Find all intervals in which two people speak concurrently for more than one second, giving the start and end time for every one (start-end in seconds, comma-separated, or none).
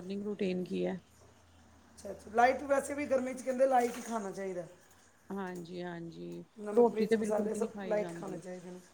6.8-8.4